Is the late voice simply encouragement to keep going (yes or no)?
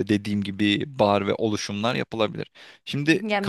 no